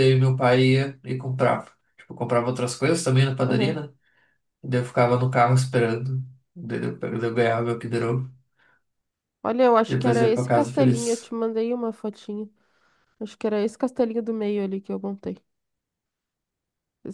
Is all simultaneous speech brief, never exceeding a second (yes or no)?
no